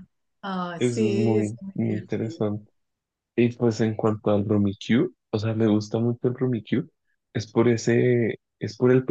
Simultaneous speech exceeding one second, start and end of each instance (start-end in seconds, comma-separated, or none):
0.8-2.4